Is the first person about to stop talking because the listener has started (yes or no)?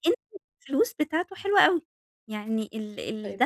no